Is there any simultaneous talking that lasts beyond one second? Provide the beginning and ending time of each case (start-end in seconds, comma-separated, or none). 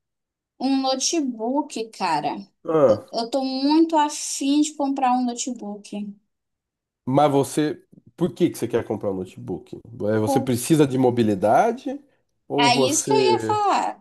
none